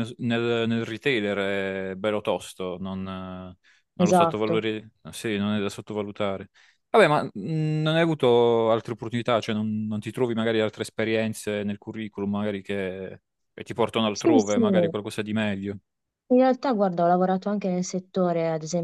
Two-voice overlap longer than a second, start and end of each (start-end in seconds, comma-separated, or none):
none